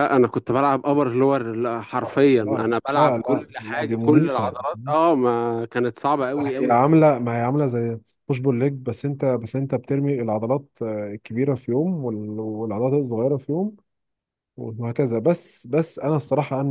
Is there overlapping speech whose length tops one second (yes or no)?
yes